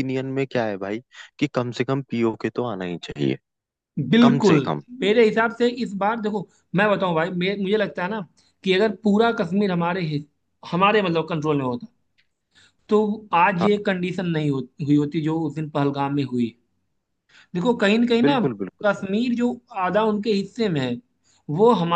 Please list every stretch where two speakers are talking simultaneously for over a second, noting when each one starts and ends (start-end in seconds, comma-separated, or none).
none